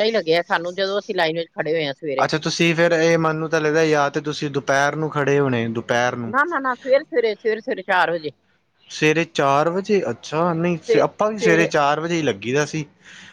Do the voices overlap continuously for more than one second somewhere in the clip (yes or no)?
no